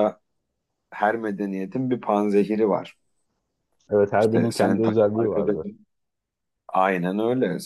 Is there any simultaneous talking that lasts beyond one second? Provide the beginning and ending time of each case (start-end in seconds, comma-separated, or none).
4.2-5.7